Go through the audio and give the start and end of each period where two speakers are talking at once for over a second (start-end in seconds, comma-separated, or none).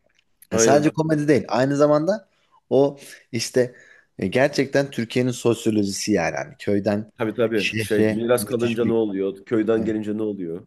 7.5-9.0